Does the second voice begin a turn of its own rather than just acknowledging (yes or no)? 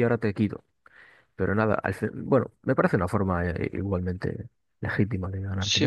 yes